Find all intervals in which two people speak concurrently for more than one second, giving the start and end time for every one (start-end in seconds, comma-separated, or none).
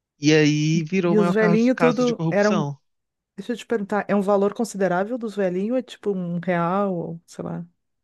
1.0-2.7